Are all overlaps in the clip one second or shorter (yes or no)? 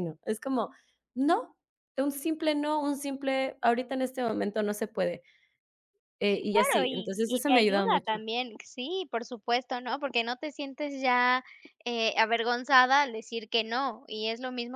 no